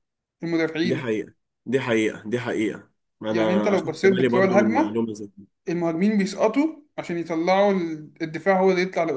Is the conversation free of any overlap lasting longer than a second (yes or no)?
no